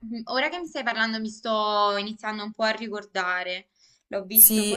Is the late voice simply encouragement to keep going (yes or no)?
no